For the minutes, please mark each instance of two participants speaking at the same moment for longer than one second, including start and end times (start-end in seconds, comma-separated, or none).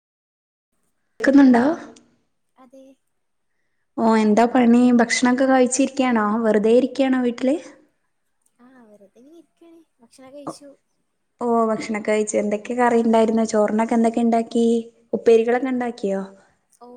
none